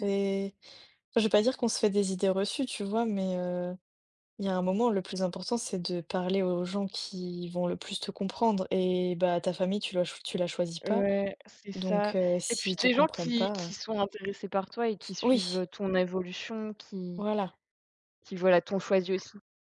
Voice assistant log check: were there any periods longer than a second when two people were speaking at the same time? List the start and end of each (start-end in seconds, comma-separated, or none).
11.7-13.7